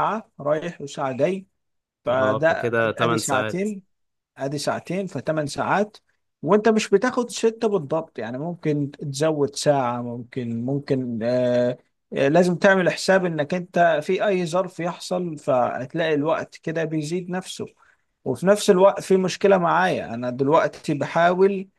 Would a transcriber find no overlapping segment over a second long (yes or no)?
no